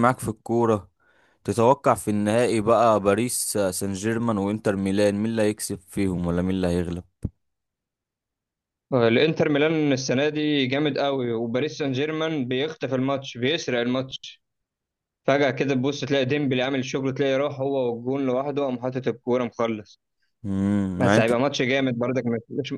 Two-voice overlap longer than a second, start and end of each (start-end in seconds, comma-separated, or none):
none